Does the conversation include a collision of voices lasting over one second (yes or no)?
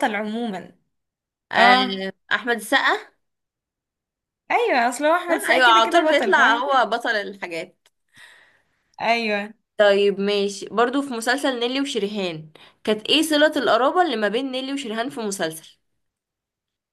yes